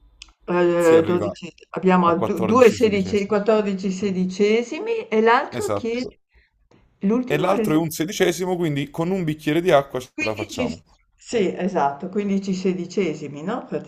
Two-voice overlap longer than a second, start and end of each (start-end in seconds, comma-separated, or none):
2.0-3.4